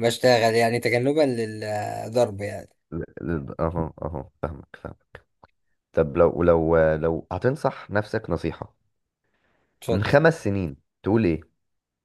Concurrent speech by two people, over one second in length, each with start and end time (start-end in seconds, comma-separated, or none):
none